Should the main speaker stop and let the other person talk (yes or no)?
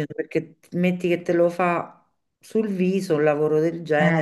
yes